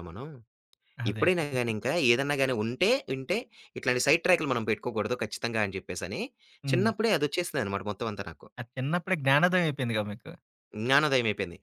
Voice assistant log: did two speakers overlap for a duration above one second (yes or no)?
no